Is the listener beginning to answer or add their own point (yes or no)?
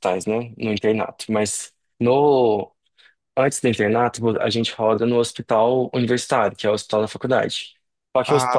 no